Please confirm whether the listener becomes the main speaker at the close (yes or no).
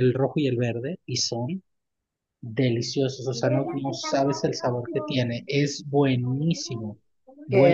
yes